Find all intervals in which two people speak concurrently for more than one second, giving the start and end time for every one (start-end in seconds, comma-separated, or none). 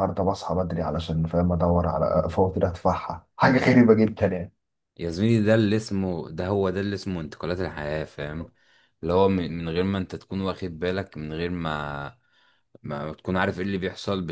none